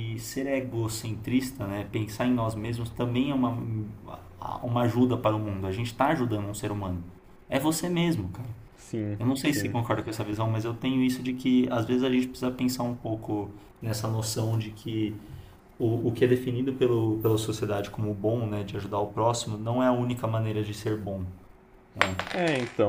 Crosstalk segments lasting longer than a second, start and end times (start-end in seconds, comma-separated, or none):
none